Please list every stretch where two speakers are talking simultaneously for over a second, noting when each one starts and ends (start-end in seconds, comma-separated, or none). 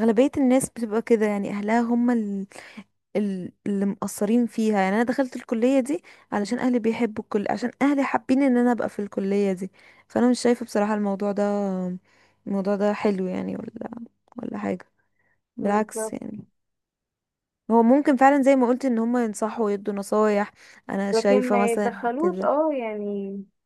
21.1-22.5